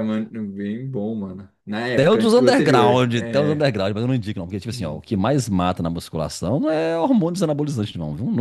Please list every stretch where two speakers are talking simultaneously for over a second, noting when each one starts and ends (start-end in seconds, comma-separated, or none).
1.9-3.7